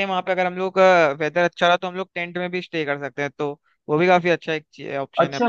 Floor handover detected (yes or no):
yes